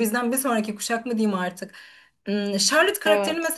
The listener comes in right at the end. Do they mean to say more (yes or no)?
no